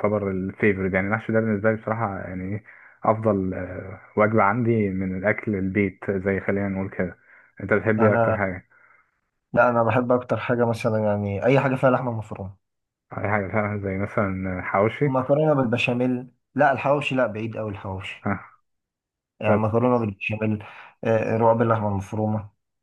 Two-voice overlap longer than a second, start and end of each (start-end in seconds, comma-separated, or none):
none